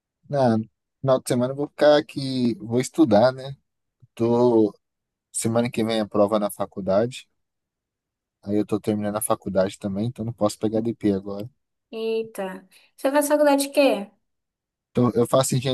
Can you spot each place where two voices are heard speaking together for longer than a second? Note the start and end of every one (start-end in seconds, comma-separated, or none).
none